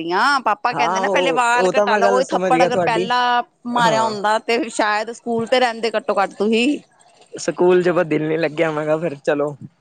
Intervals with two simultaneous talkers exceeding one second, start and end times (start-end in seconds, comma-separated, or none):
0.7-3.1